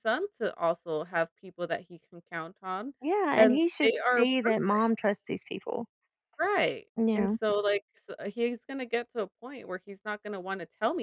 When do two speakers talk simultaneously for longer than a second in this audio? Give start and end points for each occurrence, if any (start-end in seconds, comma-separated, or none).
3.4-4.8